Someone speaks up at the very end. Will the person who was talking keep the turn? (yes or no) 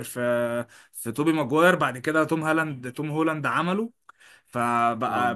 yes